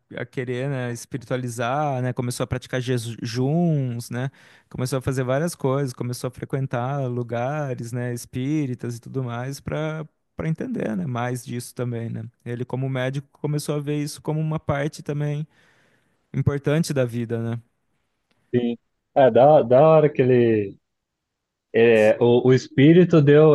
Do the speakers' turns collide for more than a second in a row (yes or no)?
no